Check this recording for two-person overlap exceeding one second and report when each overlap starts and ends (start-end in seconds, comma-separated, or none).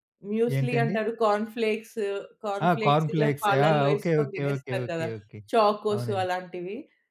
2.6-5.1